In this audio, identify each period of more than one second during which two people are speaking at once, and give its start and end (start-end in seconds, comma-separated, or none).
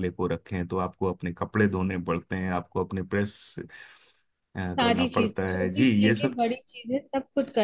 4.8-6.4